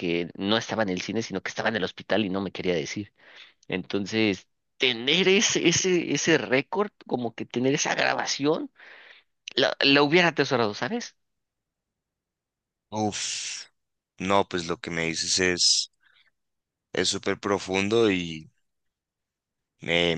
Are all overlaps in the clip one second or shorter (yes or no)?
yes